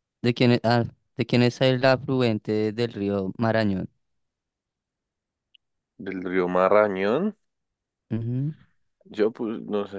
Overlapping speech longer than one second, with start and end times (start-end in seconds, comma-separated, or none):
none